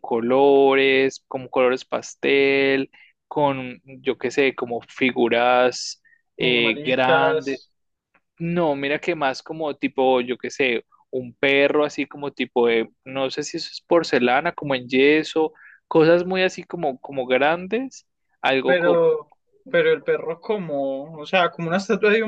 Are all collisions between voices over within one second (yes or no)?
no